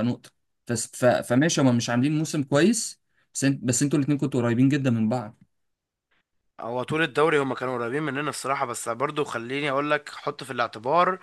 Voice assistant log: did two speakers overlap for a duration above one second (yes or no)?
no